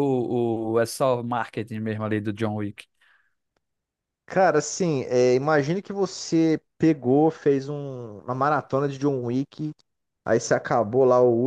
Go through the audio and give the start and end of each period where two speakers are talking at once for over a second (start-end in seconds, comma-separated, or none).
none